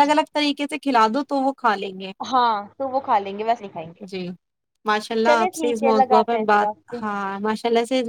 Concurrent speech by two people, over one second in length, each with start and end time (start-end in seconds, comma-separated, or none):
5.3-7.0